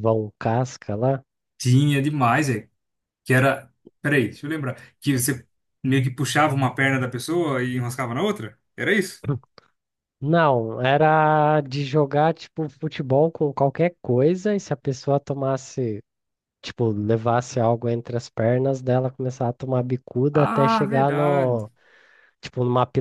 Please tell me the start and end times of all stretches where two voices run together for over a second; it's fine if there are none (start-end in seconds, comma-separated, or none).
20.3-21.6